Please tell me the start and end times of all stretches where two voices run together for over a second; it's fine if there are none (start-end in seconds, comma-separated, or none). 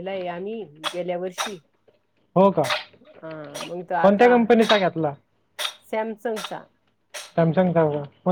none